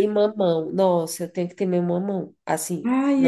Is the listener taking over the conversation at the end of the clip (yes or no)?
no